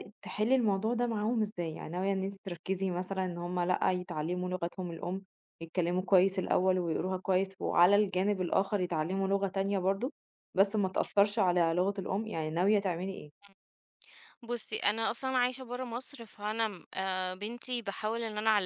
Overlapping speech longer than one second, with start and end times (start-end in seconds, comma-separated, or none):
none